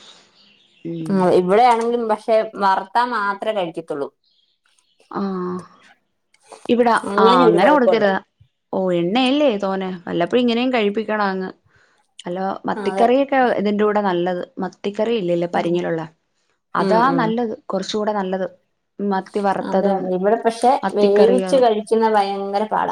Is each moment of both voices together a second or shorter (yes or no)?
yes